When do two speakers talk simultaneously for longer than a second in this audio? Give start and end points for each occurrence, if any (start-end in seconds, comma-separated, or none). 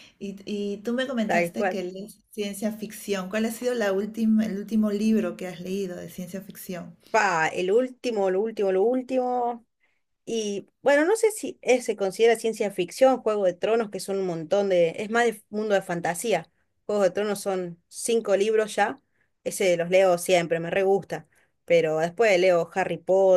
none